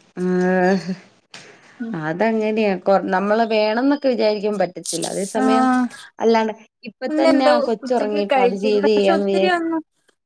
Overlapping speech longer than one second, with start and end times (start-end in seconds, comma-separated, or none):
7.1-9.6